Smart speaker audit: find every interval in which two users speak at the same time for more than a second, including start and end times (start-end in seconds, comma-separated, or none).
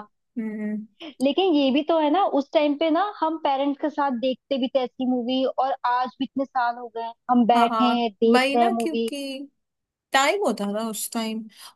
7.5-9.1